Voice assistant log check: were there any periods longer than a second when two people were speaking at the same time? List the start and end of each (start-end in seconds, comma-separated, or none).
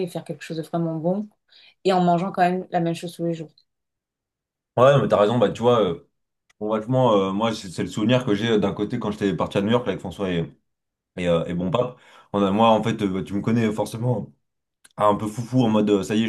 none